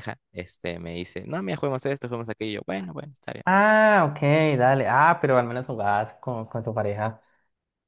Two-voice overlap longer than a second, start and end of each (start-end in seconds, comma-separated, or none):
none